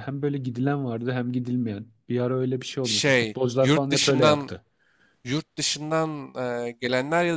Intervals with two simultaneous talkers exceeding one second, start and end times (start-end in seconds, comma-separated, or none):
2.8-4.5